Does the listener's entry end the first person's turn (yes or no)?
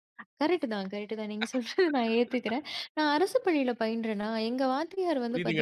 yes